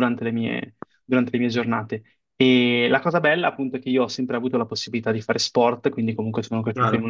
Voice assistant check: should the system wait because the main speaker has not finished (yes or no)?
yes